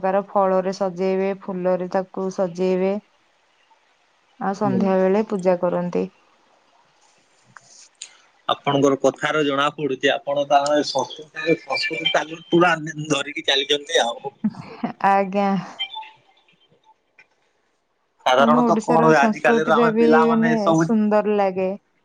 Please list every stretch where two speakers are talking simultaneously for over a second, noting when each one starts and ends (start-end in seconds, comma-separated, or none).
18.4-20.9